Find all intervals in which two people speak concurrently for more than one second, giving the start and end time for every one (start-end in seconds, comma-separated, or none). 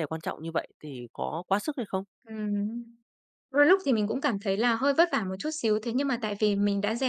none